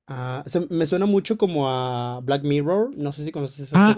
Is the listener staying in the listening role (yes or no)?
no